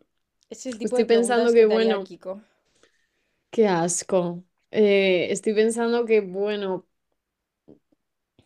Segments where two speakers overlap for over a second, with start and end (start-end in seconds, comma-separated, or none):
0.8-2.1